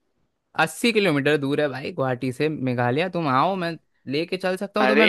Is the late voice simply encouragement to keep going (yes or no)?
yes